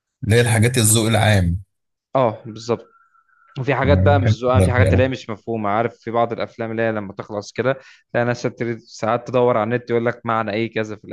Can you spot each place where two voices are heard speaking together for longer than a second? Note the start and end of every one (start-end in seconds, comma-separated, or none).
3.8-5.1